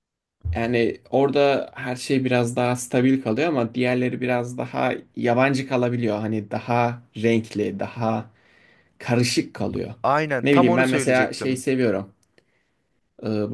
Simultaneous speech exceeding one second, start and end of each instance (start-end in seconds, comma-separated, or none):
10.4-11.7